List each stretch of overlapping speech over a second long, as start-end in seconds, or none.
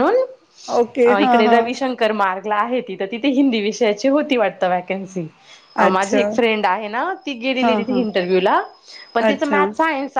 none